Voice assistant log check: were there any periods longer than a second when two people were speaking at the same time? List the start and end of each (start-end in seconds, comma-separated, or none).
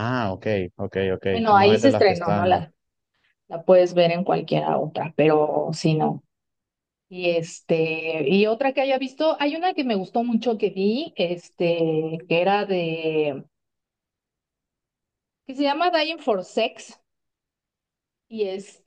1.3-2.6